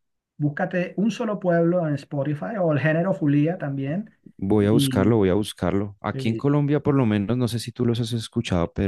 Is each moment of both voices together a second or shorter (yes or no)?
yes